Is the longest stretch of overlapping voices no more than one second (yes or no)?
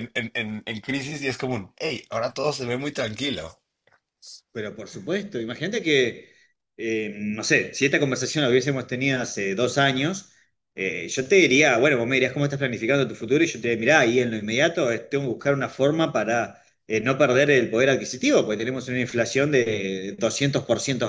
yes